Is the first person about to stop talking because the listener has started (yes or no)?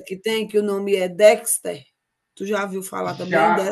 yes